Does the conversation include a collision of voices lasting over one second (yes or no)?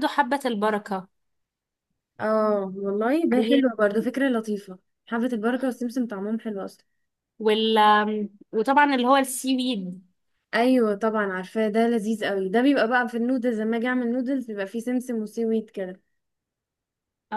no